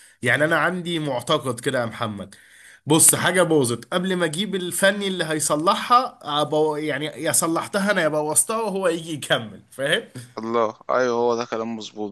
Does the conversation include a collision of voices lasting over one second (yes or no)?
no